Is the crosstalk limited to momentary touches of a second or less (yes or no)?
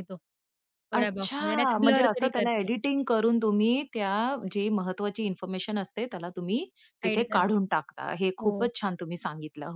no